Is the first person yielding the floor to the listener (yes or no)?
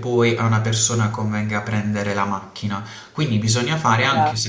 no